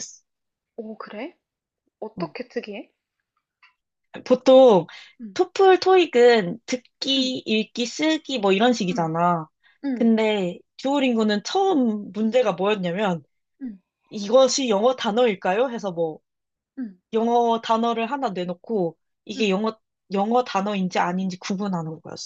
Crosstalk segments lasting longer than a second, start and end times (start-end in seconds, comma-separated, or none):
none